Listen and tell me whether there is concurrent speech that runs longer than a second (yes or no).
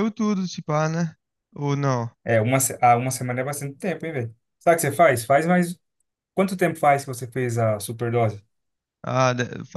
no